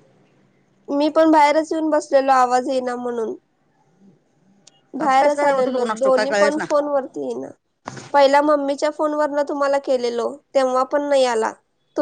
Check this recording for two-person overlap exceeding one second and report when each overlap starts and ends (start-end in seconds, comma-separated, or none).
5.0-6.6